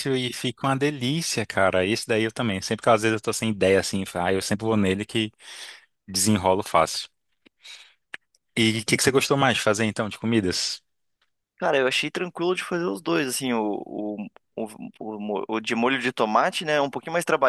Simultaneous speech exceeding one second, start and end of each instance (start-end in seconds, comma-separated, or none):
none